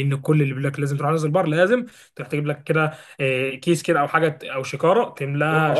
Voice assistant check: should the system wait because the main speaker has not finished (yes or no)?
no